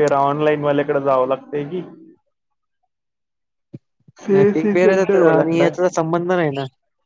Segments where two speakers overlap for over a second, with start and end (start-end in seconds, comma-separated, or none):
4.3-5.7